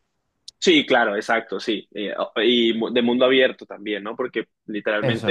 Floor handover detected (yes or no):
no